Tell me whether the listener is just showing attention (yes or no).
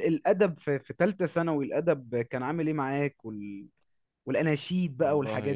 no